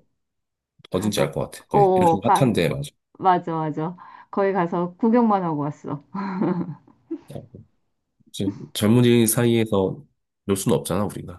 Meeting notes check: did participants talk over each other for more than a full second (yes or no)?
yes